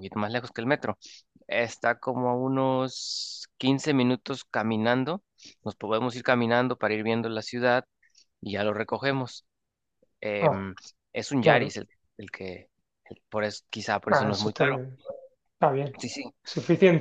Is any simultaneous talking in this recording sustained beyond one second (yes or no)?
no